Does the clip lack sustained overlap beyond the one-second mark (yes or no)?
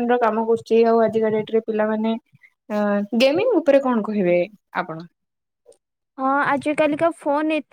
yes